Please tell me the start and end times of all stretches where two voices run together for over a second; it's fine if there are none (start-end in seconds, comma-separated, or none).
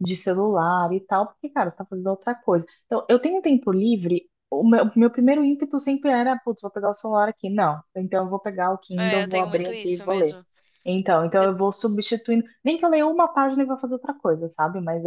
9.0-10.4